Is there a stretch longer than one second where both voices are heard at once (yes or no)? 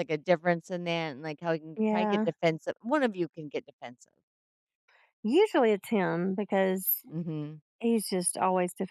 no